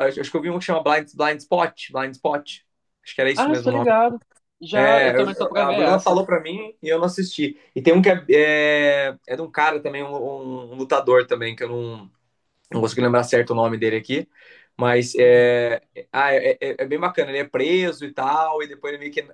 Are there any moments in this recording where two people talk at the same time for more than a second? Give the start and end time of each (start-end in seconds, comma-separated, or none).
4.7-6.2